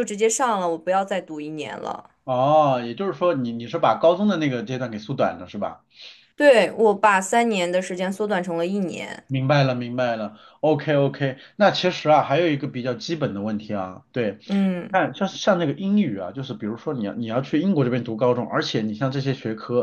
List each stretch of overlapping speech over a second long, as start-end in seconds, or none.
none